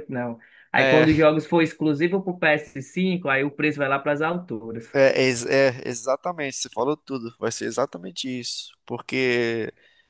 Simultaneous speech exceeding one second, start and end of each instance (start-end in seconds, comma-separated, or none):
none